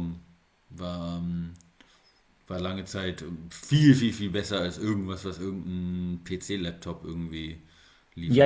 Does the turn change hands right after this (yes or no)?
yes